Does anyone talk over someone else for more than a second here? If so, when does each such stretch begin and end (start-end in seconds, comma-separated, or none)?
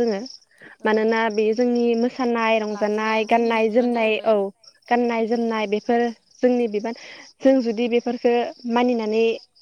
2.8-4.3